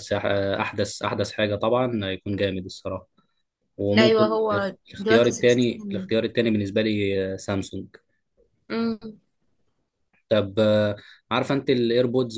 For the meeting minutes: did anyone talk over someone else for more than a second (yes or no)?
yes